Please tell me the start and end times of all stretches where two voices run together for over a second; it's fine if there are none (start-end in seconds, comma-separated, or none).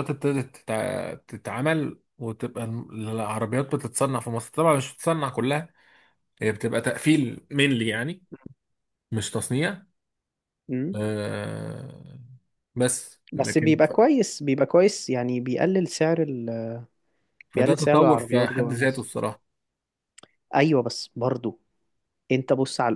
17.5-19.1